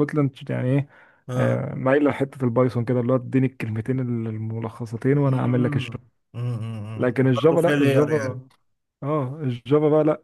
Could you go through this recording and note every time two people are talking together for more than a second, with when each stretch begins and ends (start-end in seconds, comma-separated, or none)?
7.0-8.4